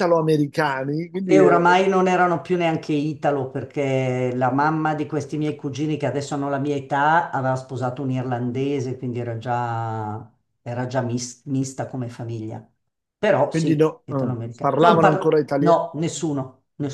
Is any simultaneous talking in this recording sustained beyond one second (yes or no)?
yes